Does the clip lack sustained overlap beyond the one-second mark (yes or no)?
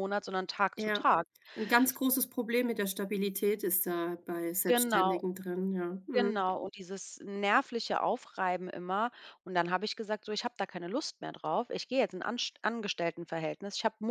yes